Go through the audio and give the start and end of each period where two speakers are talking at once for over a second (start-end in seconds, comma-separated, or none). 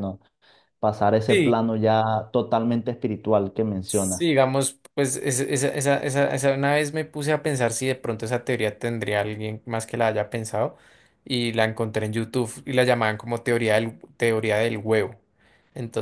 none